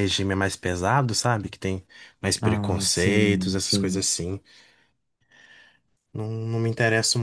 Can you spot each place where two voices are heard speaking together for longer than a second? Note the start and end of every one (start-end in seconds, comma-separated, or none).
2.4-4.1